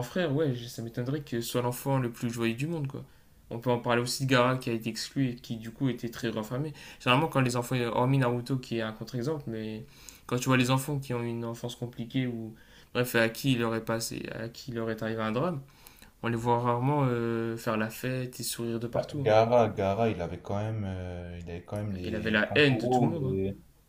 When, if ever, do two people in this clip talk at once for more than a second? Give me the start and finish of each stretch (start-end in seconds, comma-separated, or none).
22.0-23.4